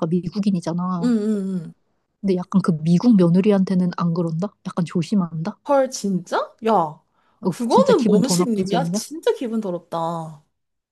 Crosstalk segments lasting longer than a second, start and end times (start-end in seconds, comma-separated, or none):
7.5-9.0